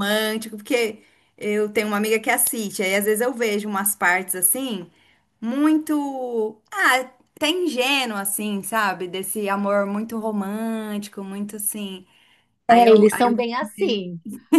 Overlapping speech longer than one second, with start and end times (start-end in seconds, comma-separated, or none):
12.7-14.0